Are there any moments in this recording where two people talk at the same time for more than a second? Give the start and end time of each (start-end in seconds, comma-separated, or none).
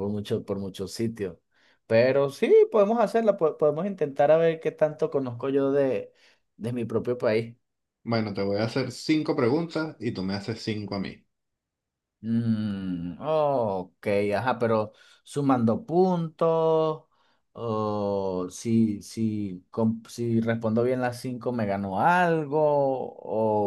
none